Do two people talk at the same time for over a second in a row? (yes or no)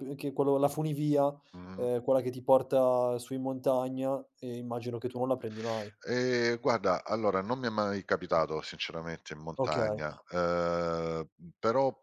no